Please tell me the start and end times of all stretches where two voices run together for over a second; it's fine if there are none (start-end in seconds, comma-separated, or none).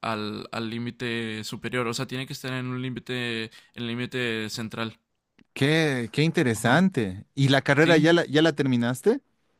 none